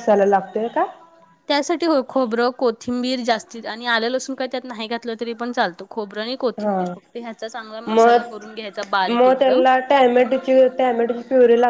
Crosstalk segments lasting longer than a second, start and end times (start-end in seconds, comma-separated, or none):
7.9-9.6